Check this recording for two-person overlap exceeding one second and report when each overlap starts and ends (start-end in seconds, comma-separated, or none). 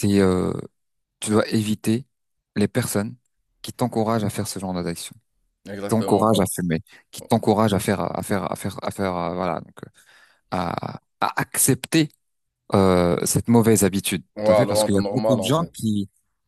14.4-15.7